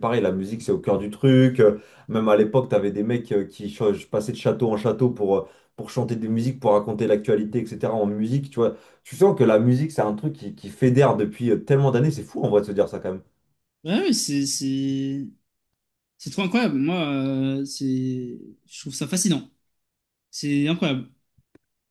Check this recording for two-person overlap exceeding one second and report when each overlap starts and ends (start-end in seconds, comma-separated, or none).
none